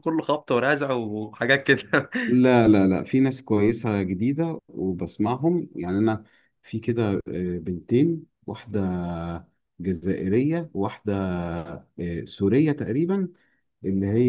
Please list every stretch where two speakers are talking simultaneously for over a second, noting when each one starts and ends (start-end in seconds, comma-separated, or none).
none